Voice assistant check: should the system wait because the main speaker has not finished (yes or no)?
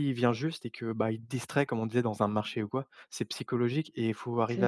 yes